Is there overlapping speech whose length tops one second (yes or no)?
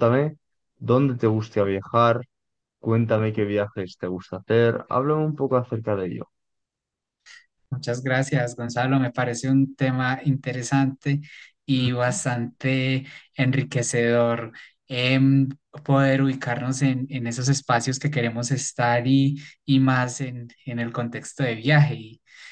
no